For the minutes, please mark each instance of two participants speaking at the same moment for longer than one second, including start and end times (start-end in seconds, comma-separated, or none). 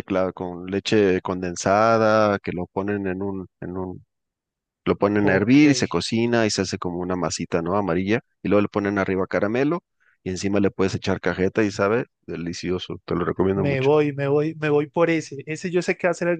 none